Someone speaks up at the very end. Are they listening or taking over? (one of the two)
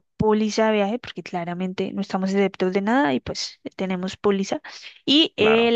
listening